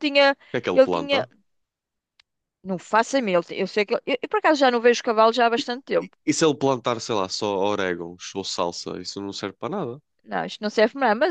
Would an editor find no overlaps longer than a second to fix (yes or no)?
yes